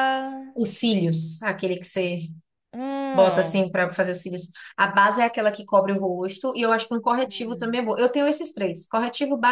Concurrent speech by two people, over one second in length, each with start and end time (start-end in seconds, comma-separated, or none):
none